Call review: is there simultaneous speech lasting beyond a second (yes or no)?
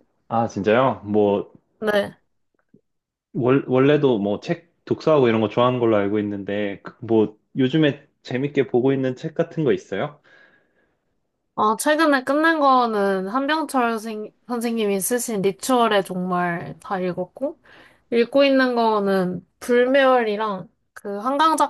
no